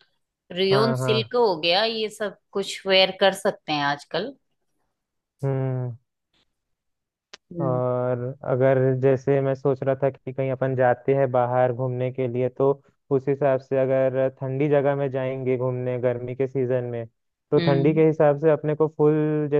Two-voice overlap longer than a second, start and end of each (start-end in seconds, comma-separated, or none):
none